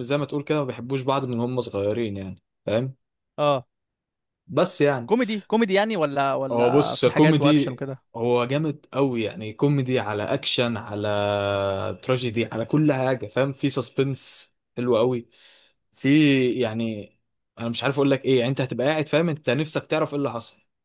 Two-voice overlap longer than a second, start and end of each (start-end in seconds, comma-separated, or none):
6.5-8.0